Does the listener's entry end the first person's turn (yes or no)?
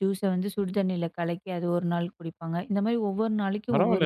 yes